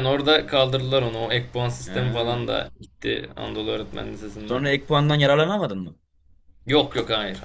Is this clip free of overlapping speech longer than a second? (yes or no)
yes